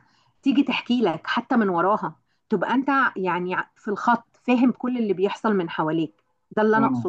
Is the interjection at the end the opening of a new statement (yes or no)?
no